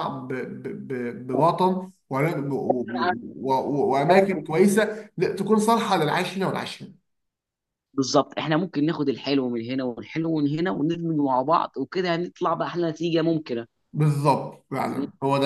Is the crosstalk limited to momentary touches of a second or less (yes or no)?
yes